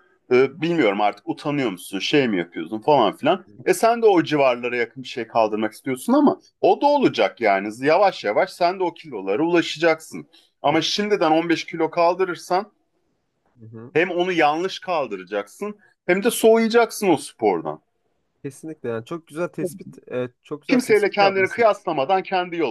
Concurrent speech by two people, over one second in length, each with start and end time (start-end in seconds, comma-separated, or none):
20.7-21.9